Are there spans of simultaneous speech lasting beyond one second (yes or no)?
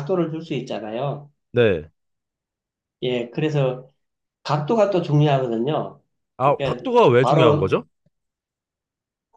yes